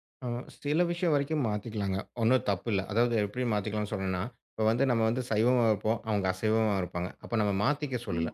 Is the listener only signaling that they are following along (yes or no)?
yes